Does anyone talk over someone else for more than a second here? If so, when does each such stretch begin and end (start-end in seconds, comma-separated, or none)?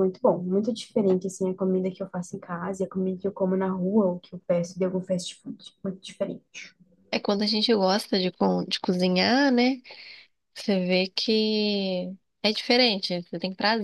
none